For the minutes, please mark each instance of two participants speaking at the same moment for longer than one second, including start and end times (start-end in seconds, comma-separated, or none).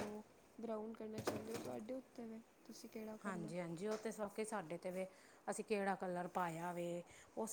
none